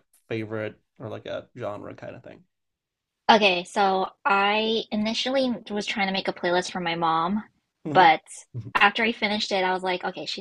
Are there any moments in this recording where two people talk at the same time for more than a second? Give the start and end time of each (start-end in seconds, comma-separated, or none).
none